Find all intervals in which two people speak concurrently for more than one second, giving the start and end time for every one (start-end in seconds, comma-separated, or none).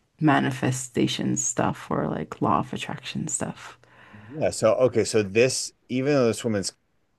none